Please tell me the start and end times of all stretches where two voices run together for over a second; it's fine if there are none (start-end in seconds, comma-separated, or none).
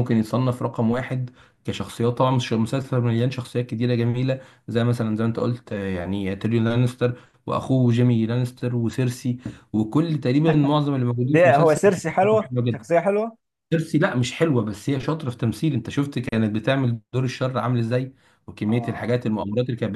11.3-12.8